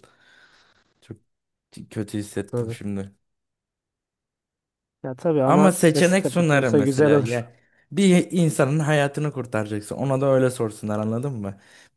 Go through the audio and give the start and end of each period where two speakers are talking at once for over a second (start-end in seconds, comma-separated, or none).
5.4-7.5